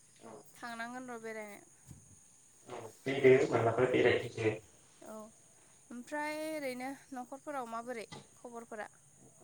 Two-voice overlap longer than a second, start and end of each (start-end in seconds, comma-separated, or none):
none